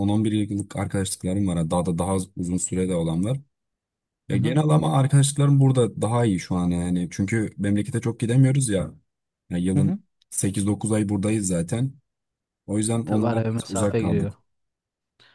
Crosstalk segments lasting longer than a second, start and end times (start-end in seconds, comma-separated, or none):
13.0-14.3